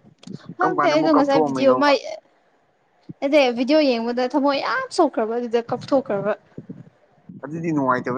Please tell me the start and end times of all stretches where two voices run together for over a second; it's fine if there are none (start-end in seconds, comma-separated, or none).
0.6-1.9